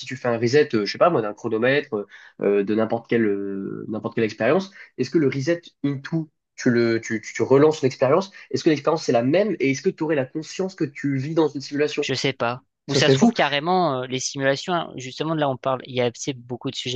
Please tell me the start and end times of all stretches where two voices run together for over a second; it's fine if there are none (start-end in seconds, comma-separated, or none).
none